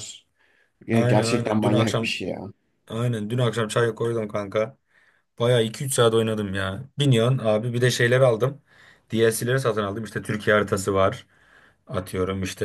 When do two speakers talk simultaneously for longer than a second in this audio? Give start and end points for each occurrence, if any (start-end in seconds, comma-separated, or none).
0.9-2.1